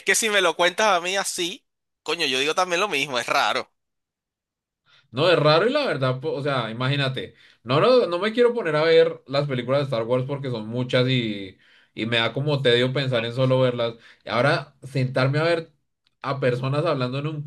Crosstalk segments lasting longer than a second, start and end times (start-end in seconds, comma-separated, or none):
none